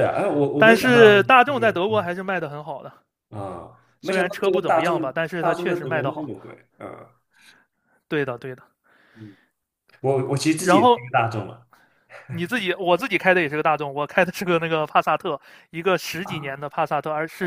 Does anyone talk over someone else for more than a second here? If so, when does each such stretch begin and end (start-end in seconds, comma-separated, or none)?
0.6-2.1, 4.0-6.3